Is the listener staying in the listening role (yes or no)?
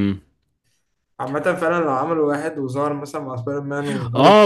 no